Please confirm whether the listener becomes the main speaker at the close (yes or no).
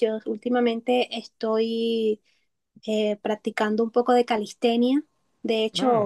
no